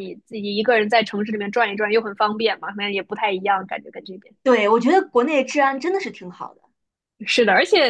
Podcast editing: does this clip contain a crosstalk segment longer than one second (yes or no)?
no